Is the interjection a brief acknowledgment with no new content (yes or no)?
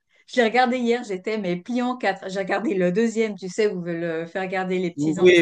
no